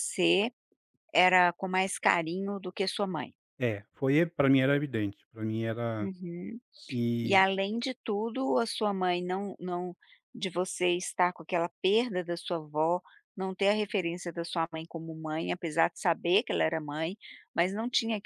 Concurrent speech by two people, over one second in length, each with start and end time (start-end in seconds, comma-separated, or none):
none